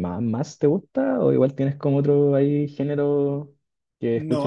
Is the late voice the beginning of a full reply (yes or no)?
yes